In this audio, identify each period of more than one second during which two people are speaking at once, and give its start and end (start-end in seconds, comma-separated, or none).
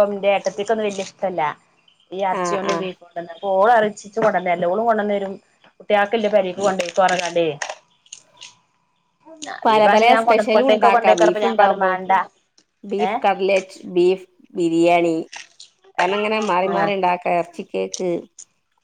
10.3-11.9